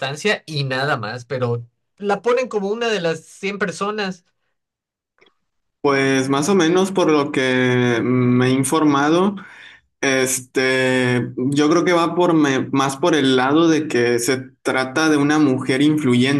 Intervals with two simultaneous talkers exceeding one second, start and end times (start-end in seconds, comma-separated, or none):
none